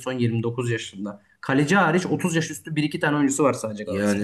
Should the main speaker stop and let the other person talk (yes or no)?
yes